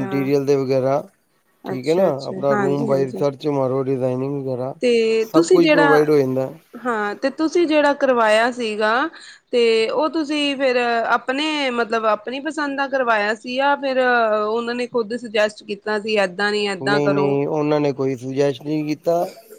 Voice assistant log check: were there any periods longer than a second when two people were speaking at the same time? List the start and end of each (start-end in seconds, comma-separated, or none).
1.7-3.2